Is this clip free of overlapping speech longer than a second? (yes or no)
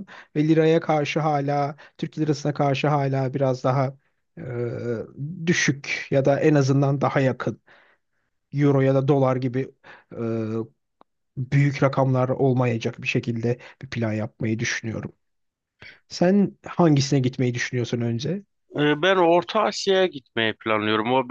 yes